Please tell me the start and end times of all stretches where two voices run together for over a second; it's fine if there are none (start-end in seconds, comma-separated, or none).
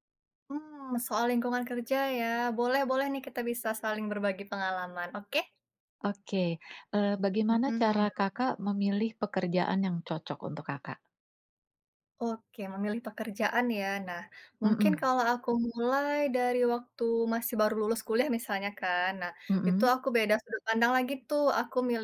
none